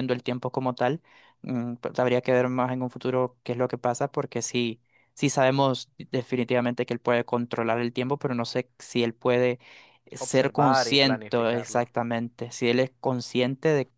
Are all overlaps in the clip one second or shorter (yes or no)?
no